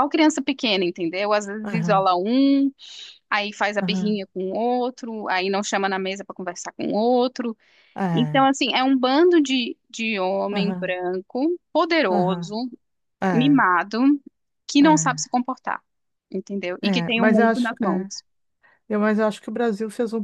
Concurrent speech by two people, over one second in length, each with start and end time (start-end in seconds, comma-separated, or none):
16.8-18.1